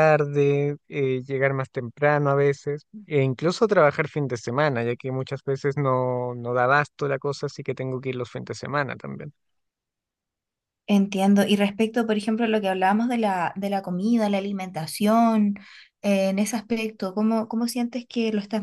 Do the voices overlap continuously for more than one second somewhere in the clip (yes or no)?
no